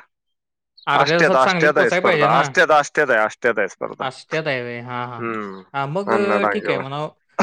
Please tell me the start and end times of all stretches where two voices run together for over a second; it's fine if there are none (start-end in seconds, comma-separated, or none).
1.0-2.4